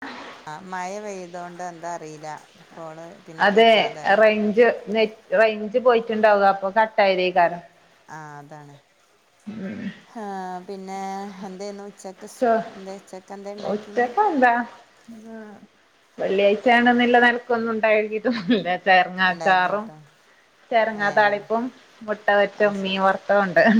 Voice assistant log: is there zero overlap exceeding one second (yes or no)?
yes